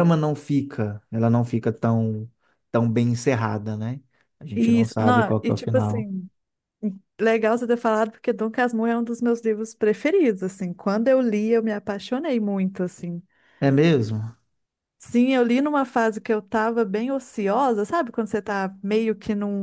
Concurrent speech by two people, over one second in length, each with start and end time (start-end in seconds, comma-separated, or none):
4.5-6.1